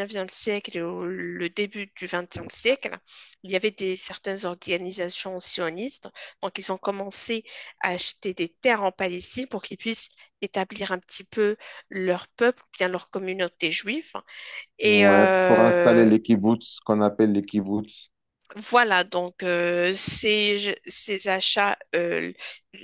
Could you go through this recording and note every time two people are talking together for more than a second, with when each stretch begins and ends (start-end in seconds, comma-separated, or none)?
14.8-16.1